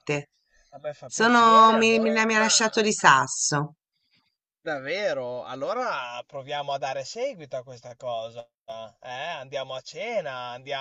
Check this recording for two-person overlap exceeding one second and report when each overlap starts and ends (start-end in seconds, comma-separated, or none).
1.1-2.3